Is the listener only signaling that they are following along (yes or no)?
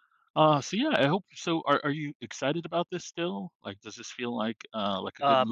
no